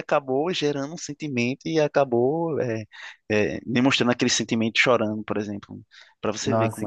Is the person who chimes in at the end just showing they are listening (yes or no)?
no